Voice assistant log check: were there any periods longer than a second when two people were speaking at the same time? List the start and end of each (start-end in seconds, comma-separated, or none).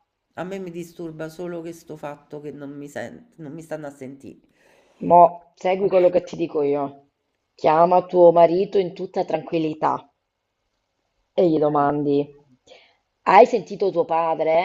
none